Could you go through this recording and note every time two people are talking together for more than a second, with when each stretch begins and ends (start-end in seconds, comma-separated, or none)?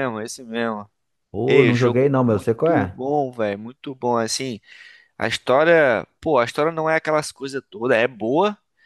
1.5-3.0